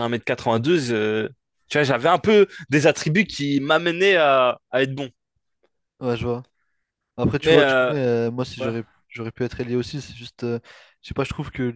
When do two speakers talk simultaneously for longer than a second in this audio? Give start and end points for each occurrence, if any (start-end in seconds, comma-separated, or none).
none